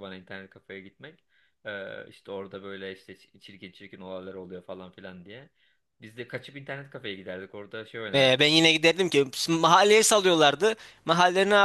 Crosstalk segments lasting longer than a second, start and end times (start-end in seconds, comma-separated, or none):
none